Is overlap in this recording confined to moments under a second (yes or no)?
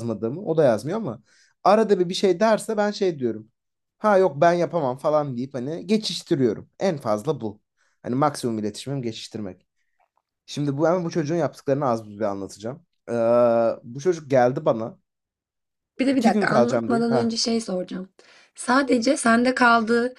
no